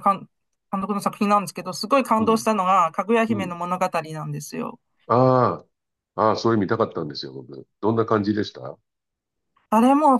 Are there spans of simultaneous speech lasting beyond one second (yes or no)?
no